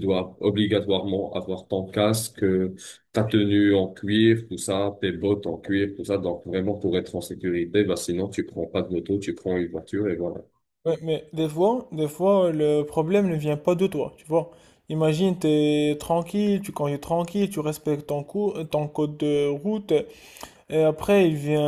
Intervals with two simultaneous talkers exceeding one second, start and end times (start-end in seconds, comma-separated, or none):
none